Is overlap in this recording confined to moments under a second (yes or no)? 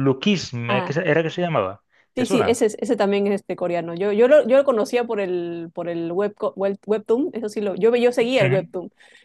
yes